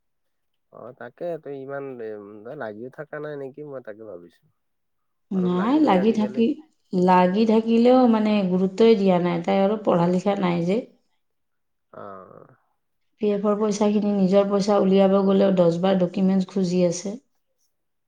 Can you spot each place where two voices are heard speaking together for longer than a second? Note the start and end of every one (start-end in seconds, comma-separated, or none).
none